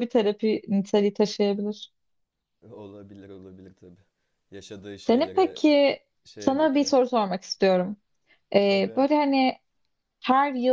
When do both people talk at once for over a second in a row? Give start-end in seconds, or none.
none